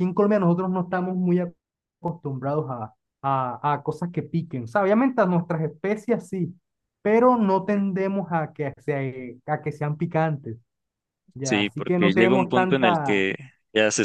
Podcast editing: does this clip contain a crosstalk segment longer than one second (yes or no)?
yes